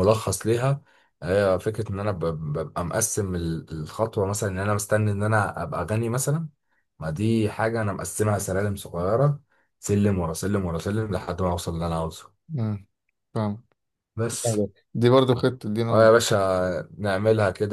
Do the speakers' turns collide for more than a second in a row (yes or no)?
no